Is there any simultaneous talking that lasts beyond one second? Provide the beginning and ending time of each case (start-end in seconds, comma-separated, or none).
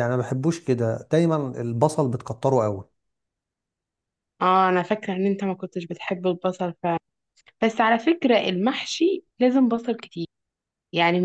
none